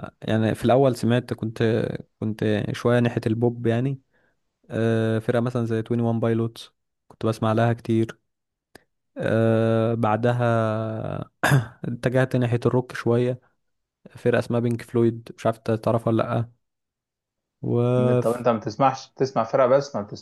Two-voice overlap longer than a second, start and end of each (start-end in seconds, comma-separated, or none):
none